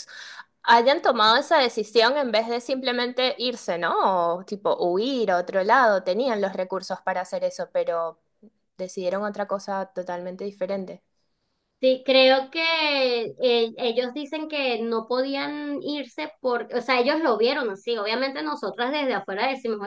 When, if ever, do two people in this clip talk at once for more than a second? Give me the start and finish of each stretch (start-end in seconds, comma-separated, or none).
none